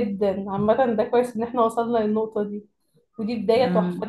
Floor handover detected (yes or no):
no